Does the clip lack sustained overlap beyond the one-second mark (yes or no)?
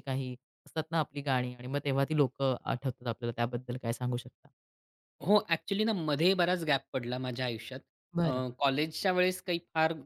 yes